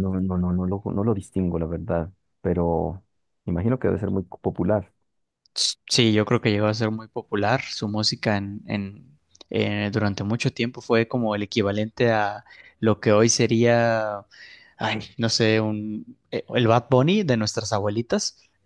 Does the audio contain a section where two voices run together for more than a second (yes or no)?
no